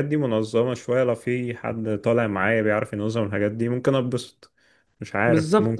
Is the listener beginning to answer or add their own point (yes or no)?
yes